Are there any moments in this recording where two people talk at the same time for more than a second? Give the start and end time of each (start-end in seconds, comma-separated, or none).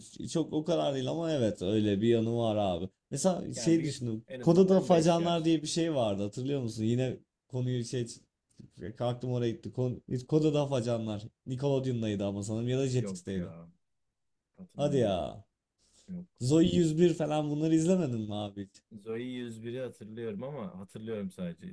3.5-5.5